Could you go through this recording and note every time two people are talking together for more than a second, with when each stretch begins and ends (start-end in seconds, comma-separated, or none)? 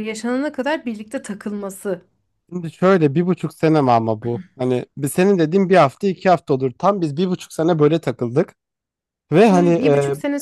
none